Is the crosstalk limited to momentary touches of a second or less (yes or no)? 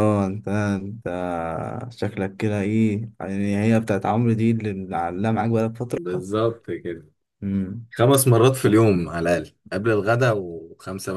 yes